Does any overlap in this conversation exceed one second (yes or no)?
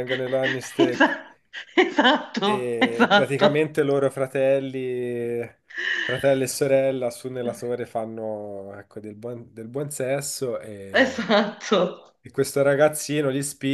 yes